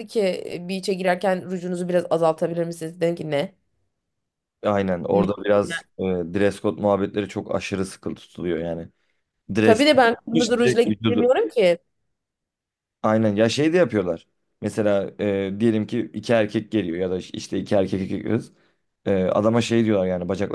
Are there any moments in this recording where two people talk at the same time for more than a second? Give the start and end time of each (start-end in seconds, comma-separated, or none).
9.6-11.3